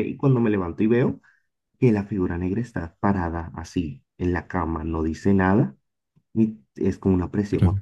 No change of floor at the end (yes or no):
yes